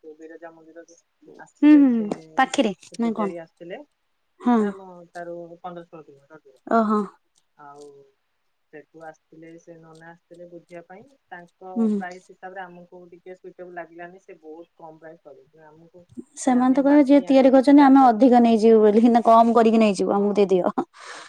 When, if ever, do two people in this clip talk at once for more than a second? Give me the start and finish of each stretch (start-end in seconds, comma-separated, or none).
16.4-18.2